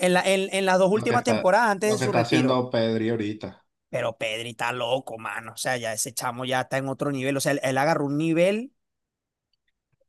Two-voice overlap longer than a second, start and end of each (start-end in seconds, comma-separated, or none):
0.9-2.6